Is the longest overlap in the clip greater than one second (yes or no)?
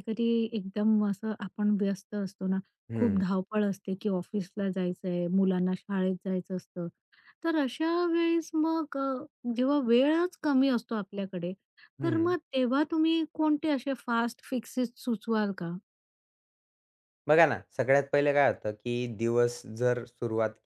no